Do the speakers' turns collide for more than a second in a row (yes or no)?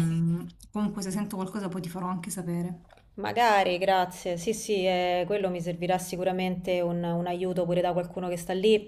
no